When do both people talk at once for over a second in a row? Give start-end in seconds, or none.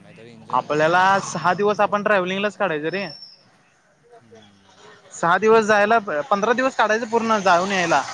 0.6-2.4